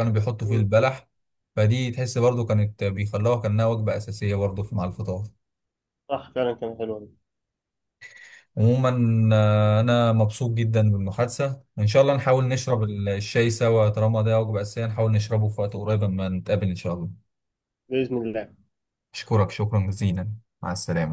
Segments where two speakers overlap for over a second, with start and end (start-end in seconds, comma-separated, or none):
none